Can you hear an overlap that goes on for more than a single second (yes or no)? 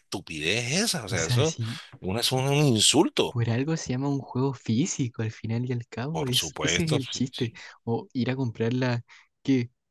yes